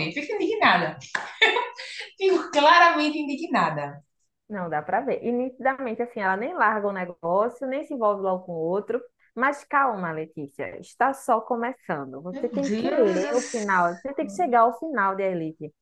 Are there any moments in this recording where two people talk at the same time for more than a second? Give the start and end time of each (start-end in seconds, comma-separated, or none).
12.3-14.6